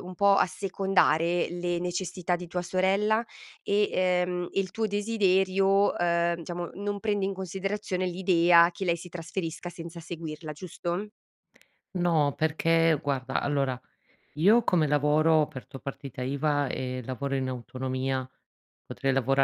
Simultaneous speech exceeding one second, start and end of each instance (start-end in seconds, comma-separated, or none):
none